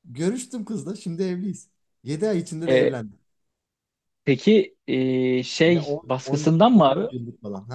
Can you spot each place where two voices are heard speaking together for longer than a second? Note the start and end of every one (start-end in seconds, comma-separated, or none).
5.7-7.1